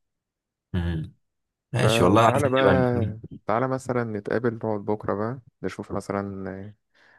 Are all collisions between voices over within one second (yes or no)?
no